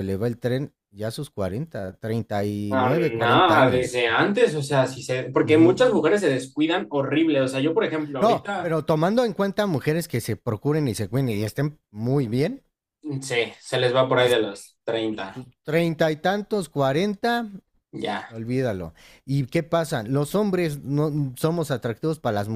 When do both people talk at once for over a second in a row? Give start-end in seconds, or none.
2.7-4.1